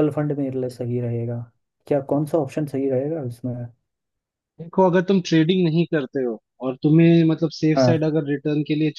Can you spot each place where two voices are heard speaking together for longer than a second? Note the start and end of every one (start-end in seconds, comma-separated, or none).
none